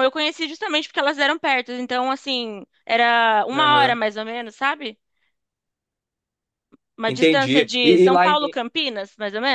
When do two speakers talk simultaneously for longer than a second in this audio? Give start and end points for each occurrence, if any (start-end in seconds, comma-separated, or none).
7.1-8.4